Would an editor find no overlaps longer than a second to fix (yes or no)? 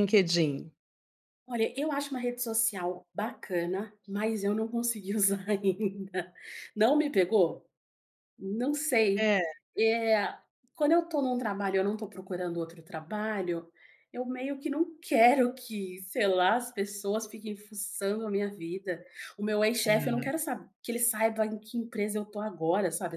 yes